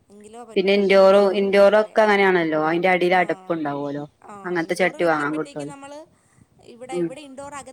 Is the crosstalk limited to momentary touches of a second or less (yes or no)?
no